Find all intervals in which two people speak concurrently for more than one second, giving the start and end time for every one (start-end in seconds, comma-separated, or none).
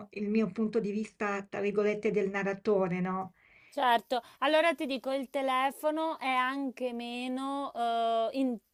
none